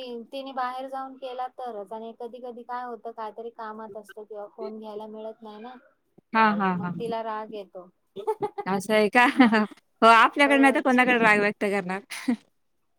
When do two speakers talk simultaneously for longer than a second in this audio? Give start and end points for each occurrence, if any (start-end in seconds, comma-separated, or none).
none